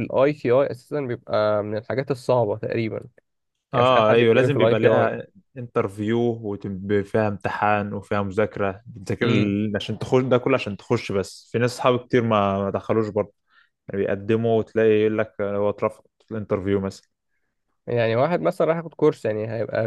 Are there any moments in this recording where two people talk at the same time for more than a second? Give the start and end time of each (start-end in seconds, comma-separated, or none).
3.7-5.1